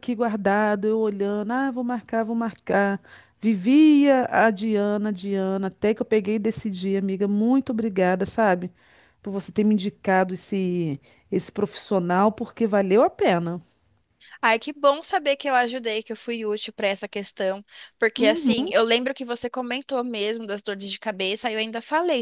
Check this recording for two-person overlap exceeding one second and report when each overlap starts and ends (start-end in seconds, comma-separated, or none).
none